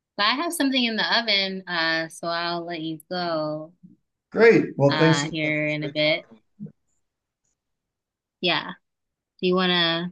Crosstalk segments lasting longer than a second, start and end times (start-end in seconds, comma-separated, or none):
4.9-6.3